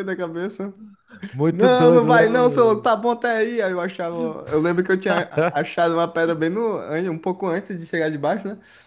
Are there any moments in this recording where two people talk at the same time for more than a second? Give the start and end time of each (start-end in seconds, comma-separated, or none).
1.5-2.9